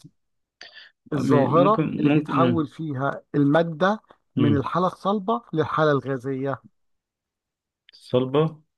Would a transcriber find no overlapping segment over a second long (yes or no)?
no